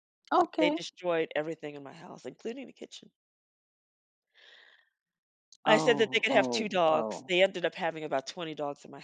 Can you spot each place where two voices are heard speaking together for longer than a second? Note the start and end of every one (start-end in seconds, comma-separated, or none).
5.7-7.3